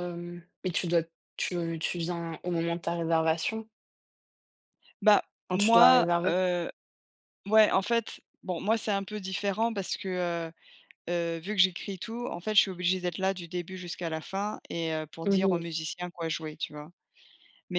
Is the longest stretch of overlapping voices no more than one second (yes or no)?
yes